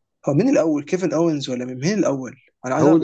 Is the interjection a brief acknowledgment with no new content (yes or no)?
no